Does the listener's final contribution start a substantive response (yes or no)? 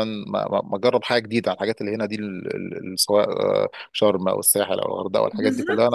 yes